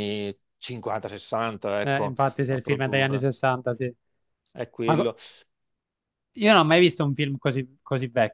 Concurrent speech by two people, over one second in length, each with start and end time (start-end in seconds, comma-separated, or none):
1.8-3.3